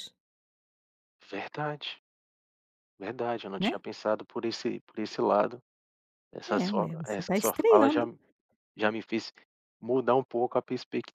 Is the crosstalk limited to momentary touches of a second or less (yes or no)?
no